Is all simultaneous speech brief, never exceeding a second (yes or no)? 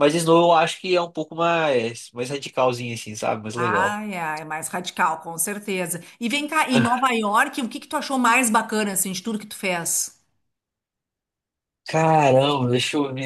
yes